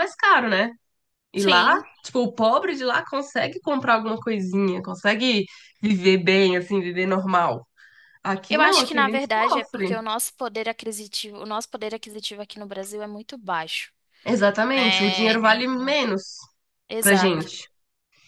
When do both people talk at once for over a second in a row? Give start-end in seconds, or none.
8.5-10.0, 14.6-16.0